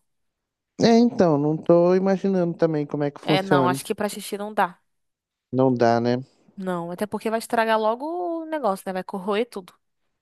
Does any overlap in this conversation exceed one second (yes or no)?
no